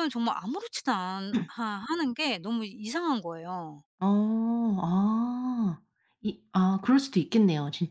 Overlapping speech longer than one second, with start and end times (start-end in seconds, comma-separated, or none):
none